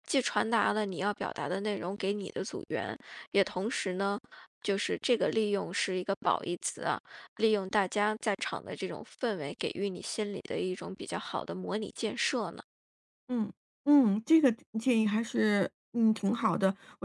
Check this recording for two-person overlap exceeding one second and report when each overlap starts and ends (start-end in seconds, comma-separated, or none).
none